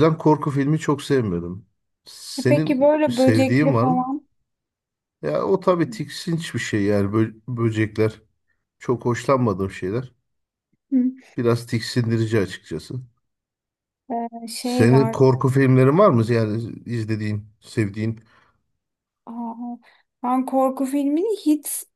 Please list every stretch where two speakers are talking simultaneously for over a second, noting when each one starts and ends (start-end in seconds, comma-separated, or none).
2.4-4.1